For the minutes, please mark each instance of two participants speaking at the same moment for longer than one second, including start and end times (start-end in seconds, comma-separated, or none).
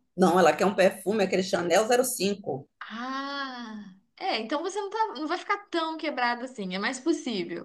none